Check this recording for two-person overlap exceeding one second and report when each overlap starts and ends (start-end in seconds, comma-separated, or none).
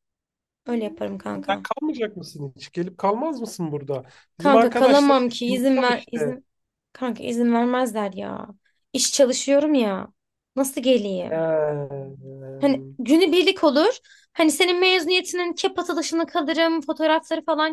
4.4-6.3